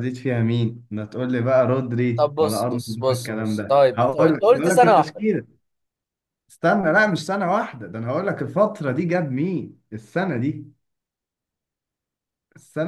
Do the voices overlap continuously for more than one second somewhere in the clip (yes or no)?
yes